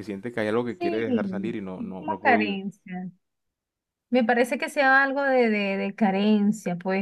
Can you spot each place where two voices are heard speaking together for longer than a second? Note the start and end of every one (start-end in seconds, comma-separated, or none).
0.8-2.6